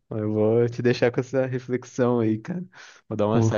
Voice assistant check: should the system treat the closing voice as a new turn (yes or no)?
no